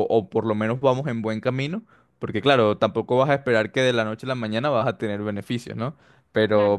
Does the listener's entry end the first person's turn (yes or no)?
no